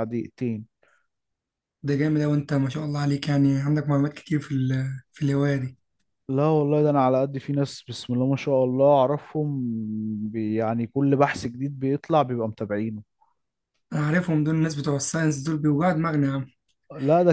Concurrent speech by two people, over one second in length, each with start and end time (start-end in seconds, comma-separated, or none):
none